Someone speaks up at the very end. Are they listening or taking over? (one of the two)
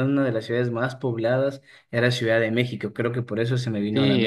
taking over